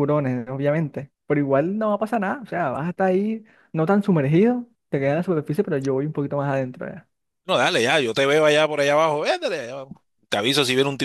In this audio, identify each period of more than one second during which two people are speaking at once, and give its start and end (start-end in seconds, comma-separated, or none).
none